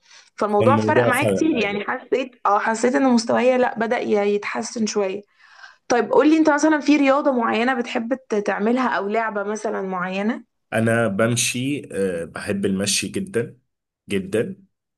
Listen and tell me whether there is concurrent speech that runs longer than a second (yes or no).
yes